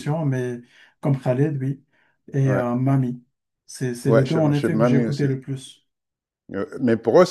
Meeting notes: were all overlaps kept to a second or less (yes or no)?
no